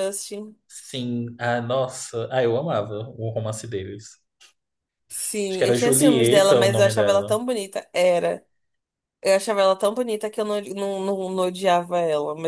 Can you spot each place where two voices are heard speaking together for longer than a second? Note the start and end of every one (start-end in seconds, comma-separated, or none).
5.5-7.4